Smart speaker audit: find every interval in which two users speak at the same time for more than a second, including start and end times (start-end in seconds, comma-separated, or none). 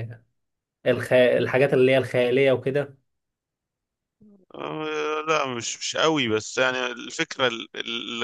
none